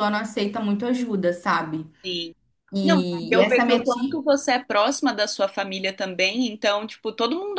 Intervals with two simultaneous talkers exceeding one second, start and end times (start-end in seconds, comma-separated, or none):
2.8-4.2